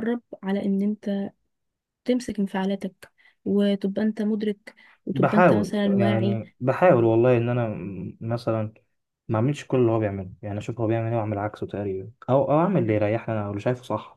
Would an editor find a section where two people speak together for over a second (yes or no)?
yes